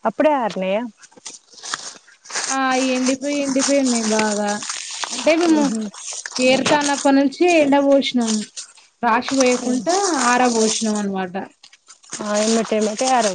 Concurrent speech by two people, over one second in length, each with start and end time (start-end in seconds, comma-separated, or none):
none